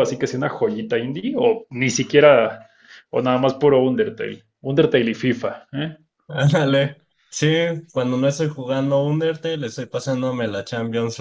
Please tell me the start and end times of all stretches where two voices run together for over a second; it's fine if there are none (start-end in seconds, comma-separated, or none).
none